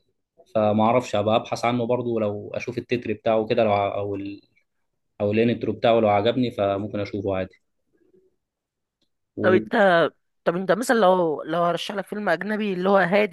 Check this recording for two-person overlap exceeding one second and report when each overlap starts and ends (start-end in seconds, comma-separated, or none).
none